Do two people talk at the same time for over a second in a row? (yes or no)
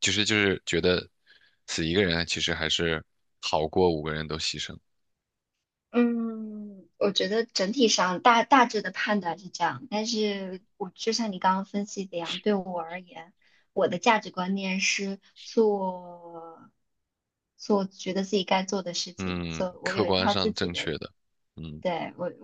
yes